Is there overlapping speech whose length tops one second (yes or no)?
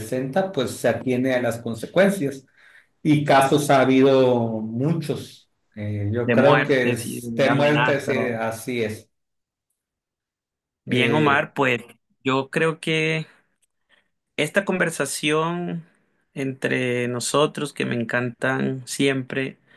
yes